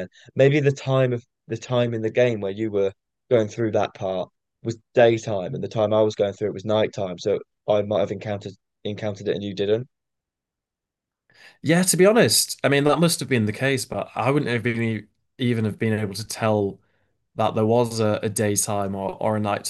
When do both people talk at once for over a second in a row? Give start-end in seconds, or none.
none